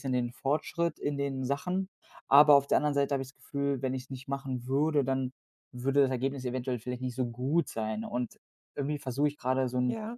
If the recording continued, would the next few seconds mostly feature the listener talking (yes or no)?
no